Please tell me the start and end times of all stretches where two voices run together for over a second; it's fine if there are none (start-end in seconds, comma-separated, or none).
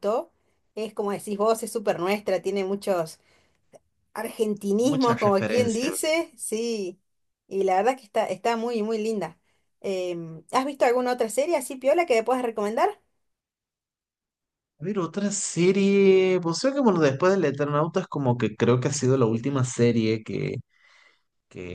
4.8-6.2